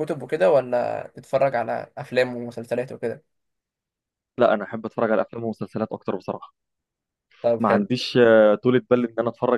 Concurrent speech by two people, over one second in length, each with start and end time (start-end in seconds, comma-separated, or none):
none